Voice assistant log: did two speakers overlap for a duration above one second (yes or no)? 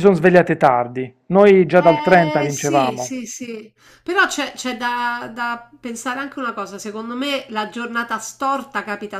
yes